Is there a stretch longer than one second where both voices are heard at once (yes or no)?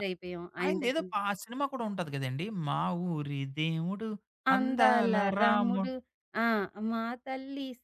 yes